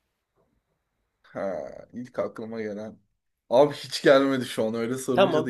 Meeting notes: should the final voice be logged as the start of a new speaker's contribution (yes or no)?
yes